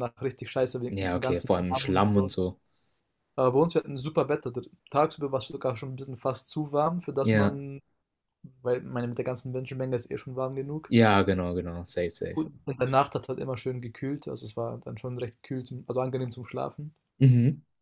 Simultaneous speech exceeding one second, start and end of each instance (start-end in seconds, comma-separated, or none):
0.9-2.3